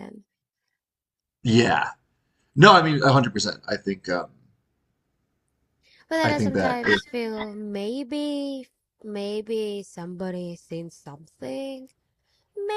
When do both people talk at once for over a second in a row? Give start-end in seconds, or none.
none